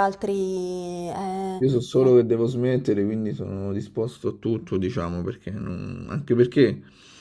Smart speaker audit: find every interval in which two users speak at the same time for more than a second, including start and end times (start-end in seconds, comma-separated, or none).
none